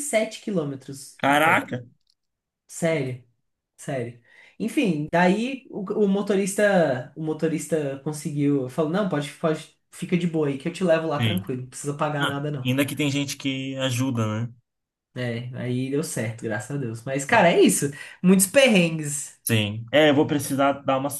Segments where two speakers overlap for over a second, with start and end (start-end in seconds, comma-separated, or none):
none